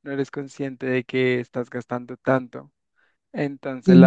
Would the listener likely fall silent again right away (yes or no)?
yes